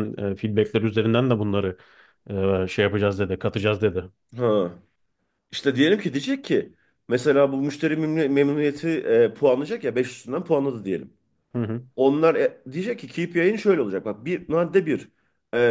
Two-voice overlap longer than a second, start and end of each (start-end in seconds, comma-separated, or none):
none